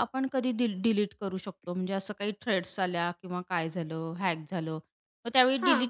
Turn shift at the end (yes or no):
no